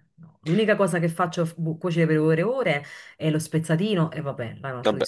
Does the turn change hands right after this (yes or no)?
yes